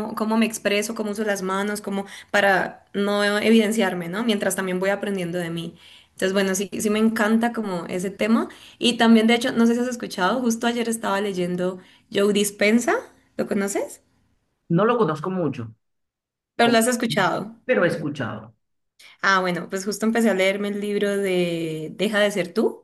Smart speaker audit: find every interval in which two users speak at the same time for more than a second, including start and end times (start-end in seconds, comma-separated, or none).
none